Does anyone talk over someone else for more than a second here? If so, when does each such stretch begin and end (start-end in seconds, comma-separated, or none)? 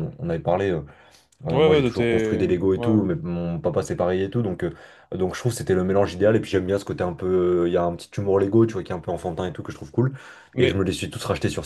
1.5-3.0